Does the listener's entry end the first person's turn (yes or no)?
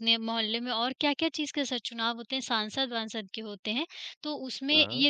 no